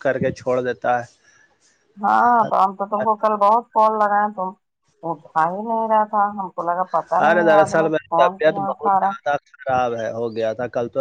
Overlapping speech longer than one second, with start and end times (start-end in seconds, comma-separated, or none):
7.3-9.1